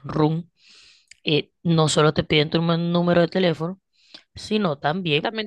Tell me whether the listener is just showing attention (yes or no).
no